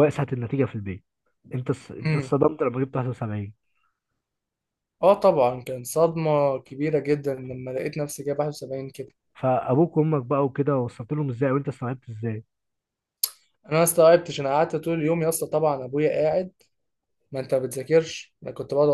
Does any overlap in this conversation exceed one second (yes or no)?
no